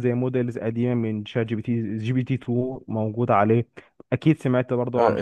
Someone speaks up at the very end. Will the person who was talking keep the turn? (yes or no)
no